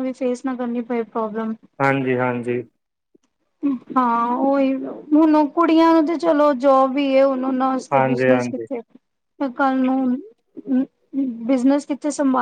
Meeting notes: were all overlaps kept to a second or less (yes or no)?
yes